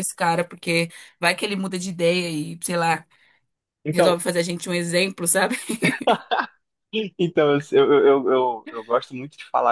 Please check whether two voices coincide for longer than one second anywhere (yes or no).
no